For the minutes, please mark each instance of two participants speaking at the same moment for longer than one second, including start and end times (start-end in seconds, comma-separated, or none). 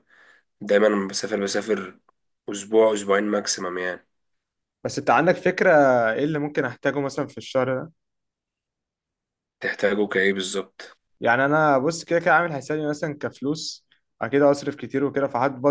none